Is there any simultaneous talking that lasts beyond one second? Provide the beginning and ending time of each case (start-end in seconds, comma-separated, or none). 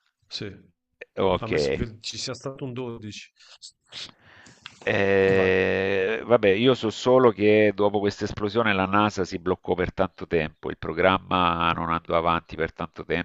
none